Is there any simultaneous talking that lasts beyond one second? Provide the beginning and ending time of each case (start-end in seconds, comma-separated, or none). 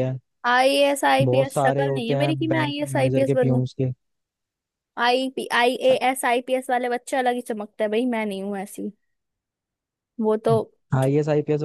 1.2-3.6